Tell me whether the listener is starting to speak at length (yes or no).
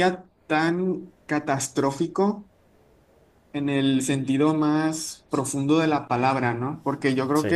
no